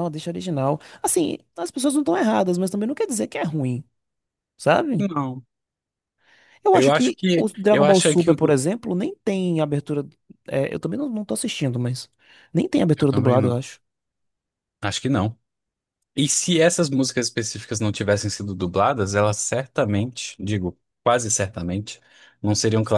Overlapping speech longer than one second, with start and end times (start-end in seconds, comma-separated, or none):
6.7-8.6